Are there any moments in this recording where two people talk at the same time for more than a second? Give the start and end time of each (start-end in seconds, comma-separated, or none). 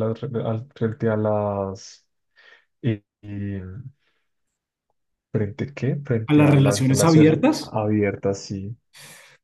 6.3-7.8